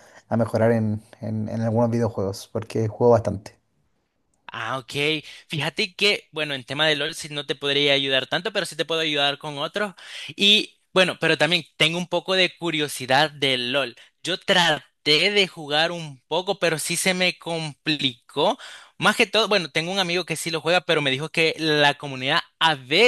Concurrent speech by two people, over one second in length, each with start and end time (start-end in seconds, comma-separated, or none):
none